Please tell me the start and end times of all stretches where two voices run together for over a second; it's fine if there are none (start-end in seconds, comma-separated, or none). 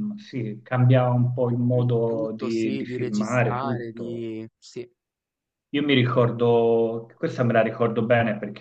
1.8-4.3